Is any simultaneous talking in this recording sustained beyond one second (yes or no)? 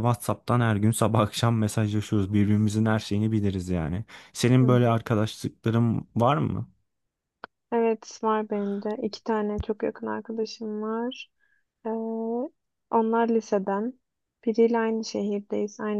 no